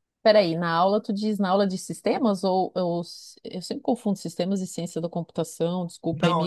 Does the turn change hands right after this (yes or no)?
yes